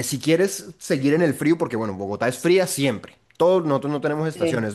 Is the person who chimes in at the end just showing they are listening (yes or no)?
yes